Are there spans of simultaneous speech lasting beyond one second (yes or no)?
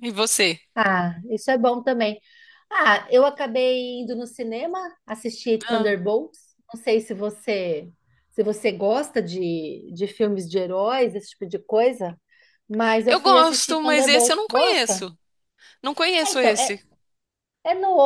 yes